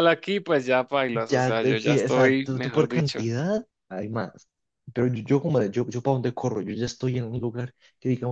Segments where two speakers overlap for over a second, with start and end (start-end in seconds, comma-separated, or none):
1.3-3.2